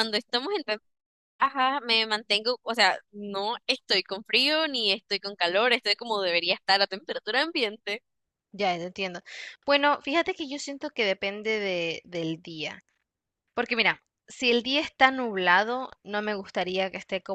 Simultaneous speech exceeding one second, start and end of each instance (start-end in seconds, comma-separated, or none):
none